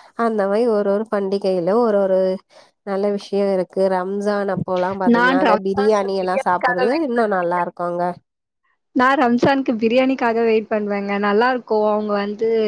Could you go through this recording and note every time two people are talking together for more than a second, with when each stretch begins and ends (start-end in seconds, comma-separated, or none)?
5.2-6.8